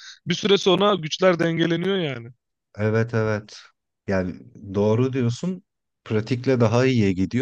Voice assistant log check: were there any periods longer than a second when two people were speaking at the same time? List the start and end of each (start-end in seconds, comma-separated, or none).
none